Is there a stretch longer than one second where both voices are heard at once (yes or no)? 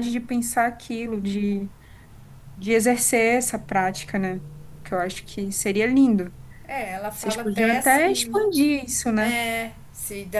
yes